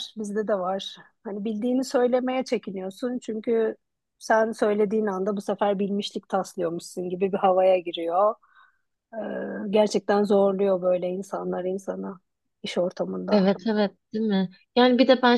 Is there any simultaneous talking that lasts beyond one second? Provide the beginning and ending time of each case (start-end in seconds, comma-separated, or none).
none